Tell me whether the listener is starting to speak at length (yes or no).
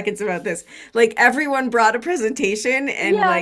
yes